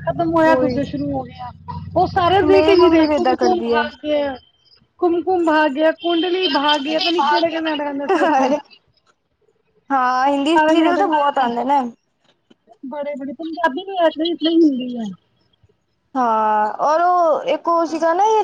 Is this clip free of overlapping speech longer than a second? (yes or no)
no